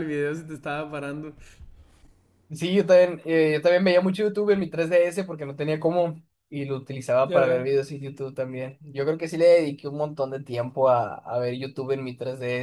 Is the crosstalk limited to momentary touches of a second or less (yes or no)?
yes